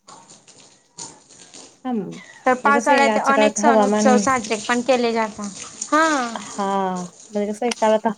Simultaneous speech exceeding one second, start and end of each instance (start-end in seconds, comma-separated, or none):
none